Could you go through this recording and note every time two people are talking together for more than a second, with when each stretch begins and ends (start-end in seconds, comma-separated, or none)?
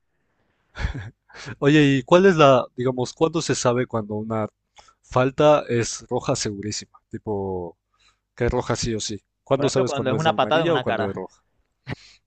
9.5-11.2